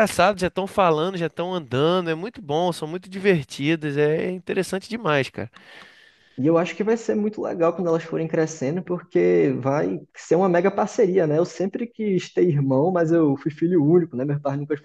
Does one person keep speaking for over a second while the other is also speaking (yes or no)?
no